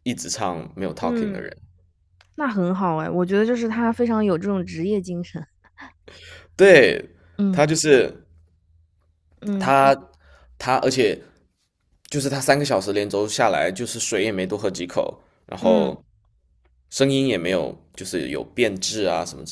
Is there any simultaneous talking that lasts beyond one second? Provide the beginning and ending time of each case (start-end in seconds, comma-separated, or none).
none